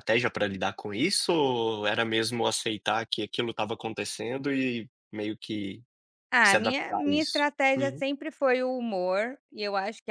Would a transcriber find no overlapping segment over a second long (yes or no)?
no